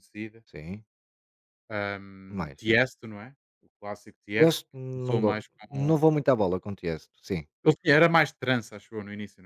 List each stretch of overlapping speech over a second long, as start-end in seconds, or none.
4.4-6.0